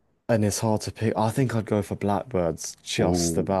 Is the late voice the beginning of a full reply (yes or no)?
yes